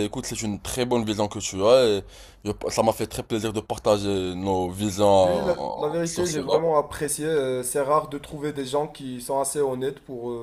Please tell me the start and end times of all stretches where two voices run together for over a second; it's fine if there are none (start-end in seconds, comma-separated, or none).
5.2-6.6